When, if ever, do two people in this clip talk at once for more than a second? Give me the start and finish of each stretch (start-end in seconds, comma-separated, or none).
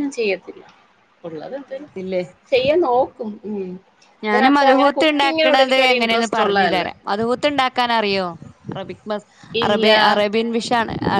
4.5-6.8